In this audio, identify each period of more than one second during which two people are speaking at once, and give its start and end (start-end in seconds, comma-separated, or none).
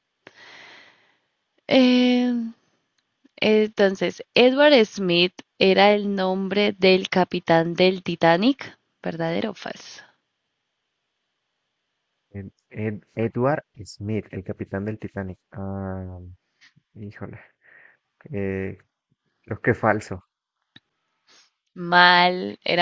none